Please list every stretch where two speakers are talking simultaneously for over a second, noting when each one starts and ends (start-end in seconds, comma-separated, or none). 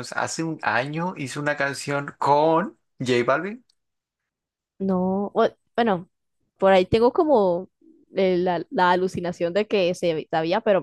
none